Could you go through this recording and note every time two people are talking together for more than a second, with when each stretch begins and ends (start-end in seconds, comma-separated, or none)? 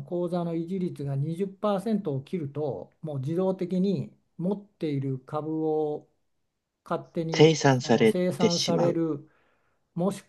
7.3-9.0